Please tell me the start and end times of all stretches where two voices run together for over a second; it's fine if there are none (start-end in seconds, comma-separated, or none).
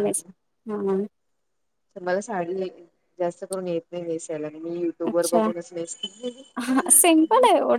none